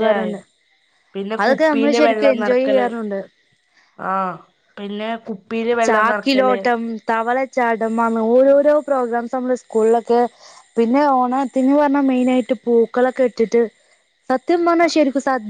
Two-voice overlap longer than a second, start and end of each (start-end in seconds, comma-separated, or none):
1.4-2.9